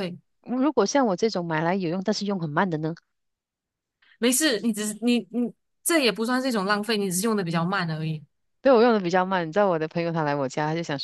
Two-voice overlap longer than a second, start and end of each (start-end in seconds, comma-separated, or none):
none